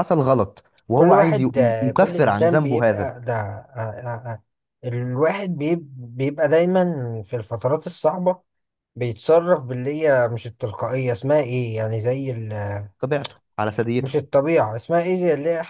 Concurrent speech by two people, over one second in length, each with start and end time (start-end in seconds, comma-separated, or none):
0.9-3.1